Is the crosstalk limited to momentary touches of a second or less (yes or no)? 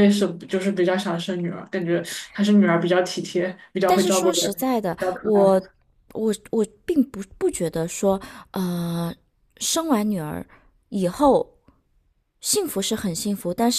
no